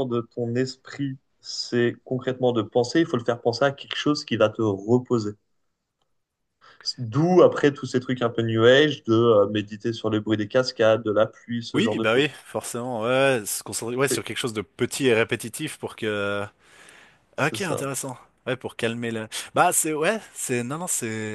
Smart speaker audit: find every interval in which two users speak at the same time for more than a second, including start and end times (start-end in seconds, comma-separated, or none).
none